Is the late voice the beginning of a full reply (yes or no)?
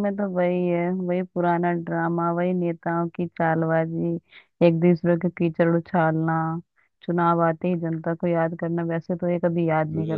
yes